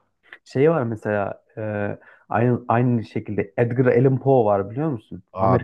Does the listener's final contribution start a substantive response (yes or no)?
yes